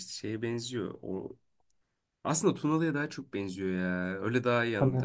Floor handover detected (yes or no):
no